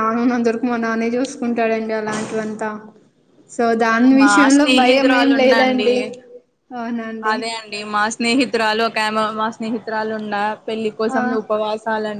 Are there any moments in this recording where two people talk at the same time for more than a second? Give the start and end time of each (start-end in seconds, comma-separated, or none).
4.2-5.9